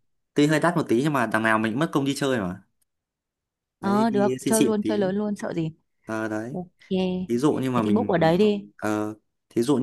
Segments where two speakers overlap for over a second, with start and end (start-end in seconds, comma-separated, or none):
3.8-5.1